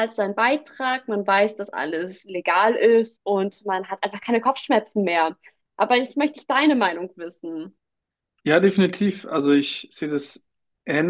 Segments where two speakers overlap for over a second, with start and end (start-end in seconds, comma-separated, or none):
none